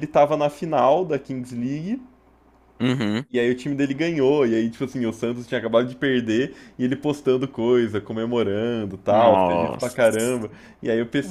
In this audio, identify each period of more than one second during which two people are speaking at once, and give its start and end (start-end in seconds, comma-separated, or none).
9.1-10.5